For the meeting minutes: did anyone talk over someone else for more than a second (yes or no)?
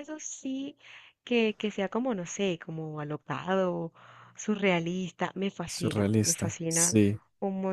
yes